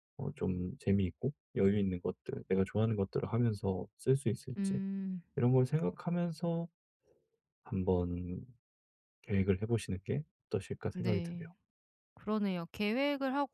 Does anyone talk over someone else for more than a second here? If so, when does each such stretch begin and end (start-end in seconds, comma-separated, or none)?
none